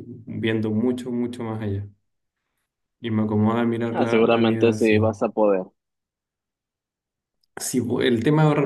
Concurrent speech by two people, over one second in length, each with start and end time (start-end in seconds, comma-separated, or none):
3.9-5.2